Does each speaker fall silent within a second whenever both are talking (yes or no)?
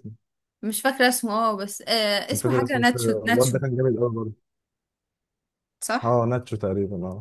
no